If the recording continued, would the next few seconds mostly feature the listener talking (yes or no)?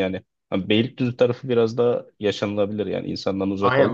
yes